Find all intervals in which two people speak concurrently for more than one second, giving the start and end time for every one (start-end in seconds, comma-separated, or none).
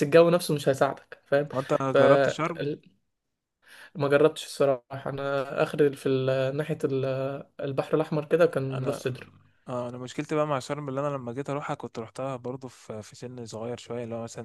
none